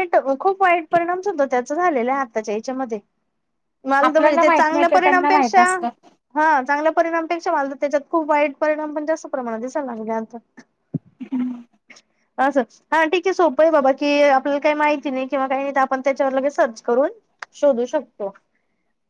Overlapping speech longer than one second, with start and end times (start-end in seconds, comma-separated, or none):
4.1-5.7